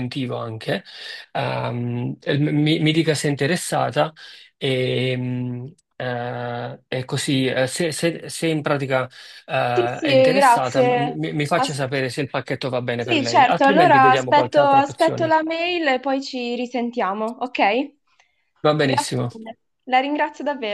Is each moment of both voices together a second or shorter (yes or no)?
no